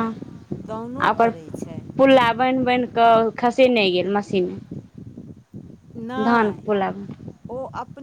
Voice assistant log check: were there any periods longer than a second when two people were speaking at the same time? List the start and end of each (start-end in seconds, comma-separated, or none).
none